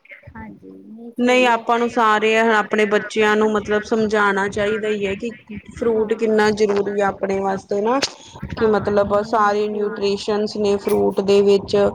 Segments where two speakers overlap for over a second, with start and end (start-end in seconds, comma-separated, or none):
8.6-10.1